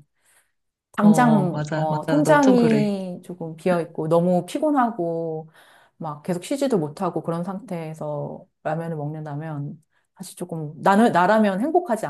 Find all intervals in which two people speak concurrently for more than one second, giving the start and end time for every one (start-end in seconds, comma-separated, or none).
1.0-2.9